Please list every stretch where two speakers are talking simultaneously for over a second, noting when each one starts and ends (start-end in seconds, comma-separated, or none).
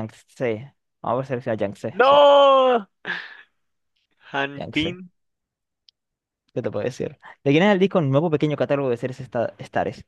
none